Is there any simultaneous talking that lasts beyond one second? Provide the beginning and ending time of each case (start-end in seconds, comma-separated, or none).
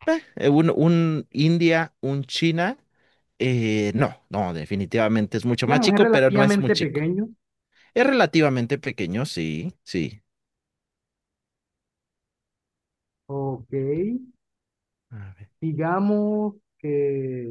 5.6-7.0